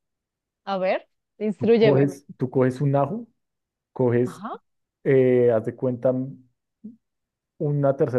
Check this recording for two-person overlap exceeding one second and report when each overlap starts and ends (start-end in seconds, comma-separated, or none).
none